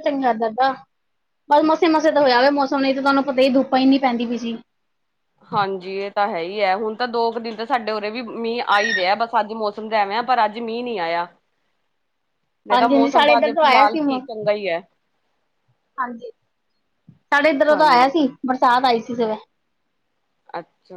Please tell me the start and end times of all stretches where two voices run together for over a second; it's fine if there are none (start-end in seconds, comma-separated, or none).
12.7-14.2